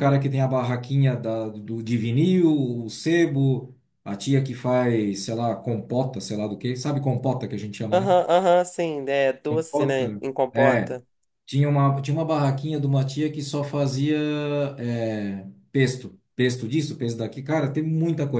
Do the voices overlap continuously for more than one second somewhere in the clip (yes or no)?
yes